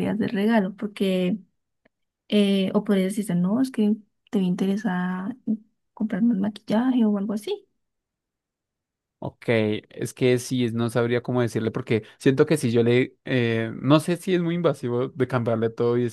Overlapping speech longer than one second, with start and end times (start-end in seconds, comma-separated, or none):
none